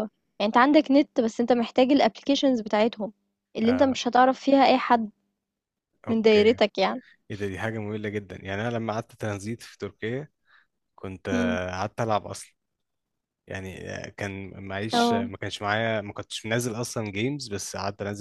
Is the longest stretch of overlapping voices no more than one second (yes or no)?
yes